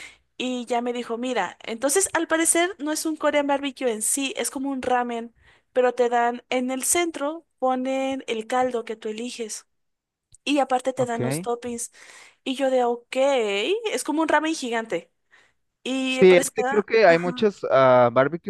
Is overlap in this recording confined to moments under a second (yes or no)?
no